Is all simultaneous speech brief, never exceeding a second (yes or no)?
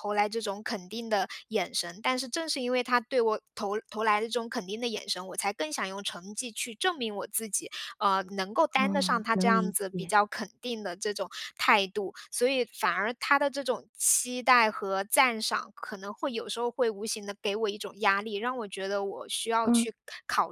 no